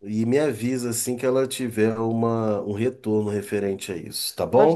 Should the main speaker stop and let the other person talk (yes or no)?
yes